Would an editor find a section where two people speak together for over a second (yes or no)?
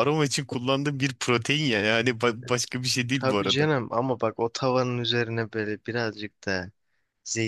no